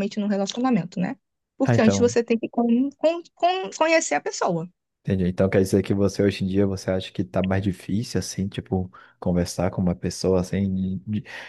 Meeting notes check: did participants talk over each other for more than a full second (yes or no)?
no